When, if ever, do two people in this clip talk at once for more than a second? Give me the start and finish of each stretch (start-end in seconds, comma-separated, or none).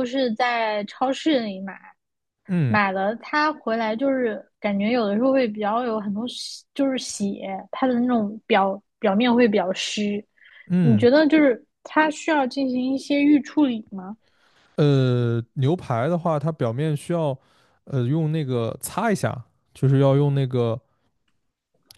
none